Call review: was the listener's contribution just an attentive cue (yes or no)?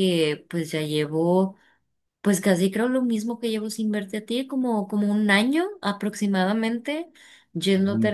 yes